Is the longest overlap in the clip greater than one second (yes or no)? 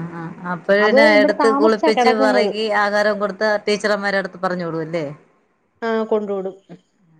yes